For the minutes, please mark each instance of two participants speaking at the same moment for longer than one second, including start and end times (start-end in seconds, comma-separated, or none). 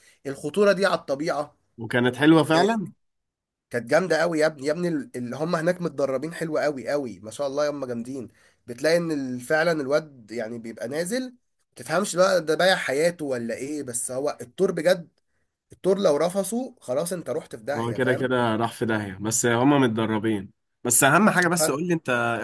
none